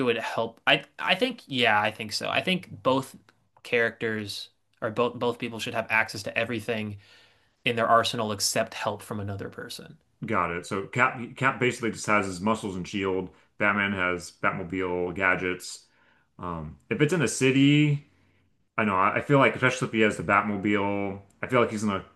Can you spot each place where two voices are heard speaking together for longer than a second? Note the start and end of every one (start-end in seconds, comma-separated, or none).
none